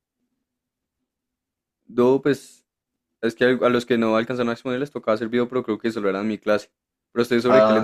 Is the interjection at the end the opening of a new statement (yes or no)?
yes